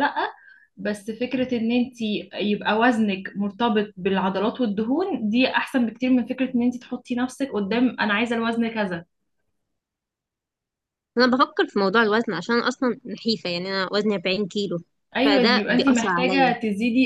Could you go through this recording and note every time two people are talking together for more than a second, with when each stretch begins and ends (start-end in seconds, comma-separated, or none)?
15.2-16.5